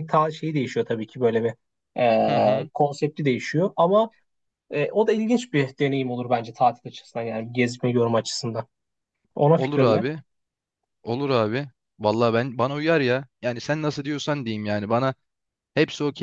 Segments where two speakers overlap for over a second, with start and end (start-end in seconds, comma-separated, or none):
none